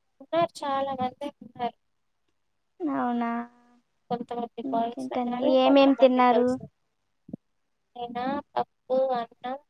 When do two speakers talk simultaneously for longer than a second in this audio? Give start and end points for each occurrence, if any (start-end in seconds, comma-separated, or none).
4.7-6.5